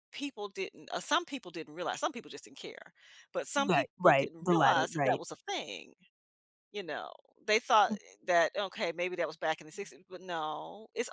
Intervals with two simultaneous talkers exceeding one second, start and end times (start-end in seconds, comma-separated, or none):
3.6-5.2